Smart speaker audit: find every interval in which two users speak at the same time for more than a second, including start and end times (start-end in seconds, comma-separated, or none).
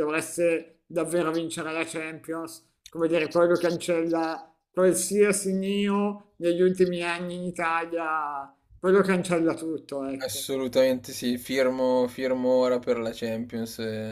none